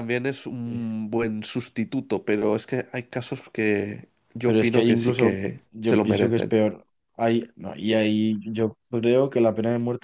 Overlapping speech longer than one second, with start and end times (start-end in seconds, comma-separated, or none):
4.4-6.5